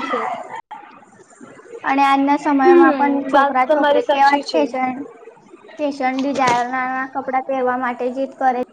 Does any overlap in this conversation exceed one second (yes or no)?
yes